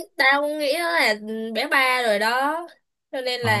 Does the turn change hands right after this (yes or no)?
yes